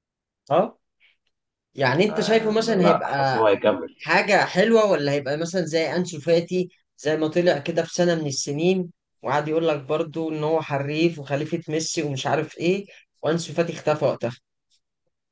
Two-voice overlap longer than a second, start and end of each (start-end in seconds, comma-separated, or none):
2.1-3.4